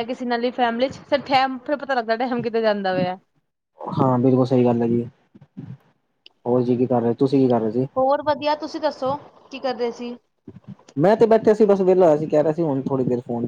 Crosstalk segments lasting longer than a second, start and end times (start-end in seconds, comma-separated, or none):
none